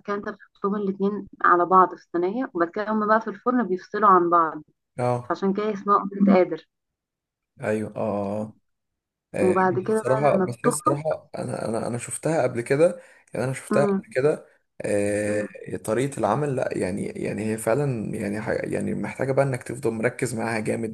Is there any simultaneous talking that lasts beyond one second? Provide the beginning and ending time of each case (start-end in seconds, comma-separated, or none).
9.4-11.0